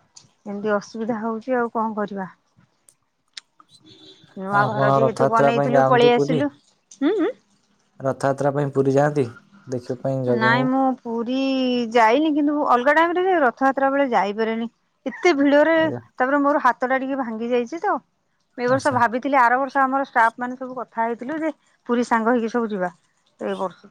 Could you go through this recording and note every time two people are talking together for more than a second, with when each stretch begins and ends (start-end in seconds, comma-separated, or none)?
4.6-6.4